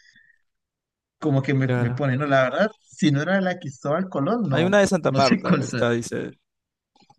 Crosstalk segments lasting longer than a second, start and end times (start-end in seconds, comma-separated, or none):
4.5-5.8